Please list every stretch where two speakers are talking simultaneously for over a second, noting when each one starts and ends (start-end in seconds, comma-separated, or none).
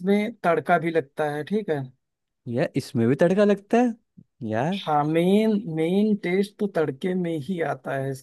none